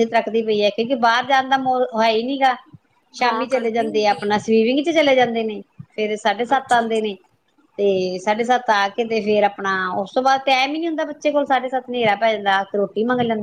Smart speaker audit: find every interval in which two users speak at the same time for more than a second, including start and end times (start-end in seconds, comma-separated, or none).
3.2-4.5